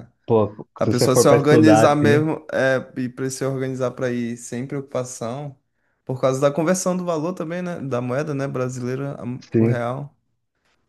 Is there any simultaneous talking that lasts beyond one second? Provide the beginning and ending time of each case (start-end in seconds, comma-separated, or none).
0.8-2.2